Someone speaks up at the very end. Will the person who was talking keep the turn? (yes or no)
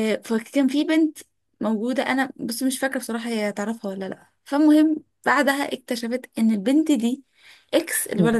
yes